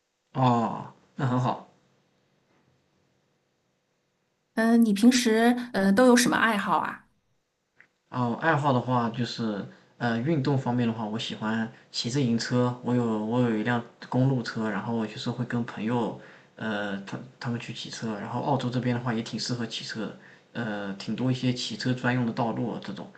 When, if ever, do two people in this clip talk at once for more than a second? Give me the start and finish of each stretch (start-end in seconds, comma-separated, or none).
none